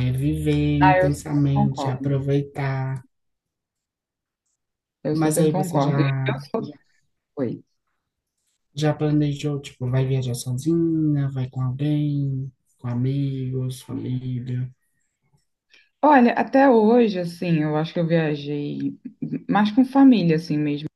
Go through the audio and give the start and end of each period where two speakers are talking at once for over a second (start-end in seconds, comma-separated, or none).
0.8-2.2, 5.1-6.4